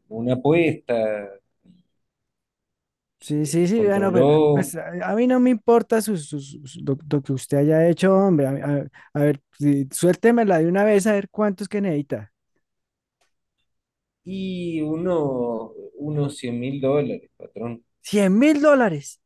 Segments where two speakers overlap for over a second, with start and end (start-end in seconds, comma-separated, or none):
3.2-4.7